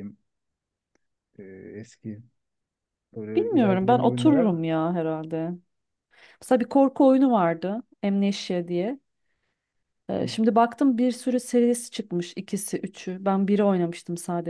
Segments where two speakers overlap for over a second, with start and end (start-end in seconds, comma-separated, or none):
3.4-4.6